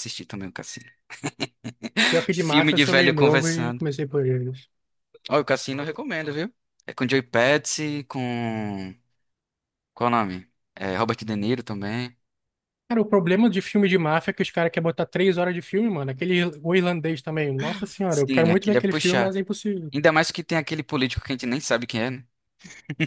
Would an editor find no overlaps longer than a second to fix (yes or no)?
no